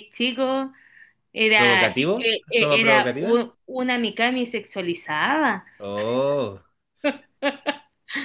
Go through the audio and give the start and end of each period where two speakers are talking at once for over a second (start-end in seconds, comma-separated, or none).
1.5-3.5